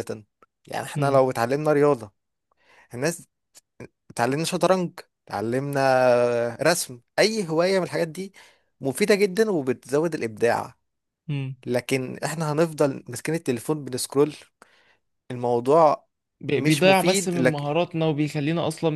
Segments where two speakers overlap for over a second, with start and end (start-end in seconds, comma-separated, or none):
16.6-17.8